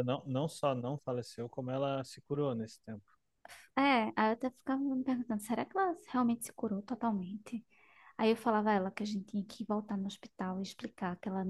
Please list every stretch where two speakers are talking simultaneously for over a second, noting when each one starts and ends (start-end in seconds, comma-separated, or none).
none